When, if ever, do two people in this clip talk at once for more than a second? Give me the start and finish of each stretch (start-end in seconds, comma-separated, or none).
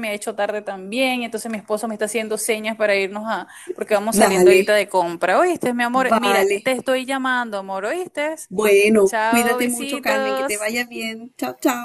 9.1-10.7